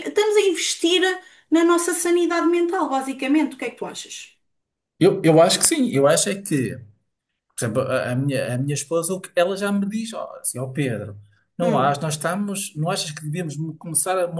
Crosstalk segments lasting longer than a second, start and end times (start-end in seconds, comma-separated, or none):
none